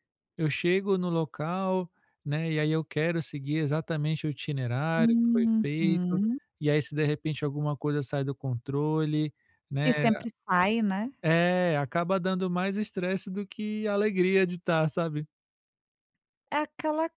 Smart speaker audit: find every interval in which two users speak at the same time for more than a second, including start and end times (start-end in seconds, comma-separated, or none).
5.0-6.2